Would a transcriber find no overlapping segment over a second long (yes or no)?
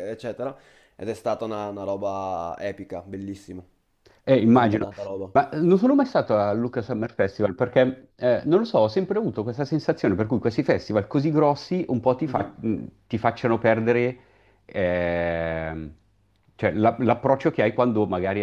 yes